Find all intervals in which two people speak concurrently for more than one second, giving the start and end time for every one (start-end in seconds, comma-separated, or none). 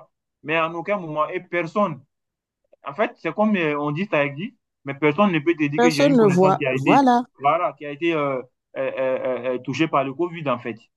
5.8-7.0